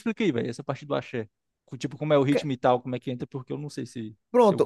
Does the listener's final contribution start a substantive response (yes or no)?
yes